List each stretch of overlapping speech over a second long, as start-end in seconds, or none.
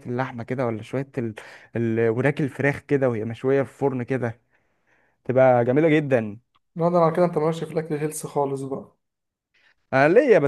none